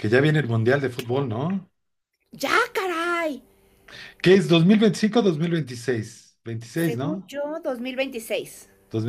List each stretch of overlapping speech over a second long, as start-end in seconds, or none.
none